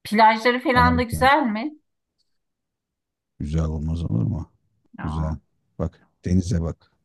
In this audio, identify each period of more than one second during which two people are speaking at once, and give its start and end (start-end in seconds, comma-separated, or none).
none